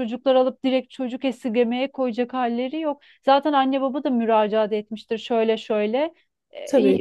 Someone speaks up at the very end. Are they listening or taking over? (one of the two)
listening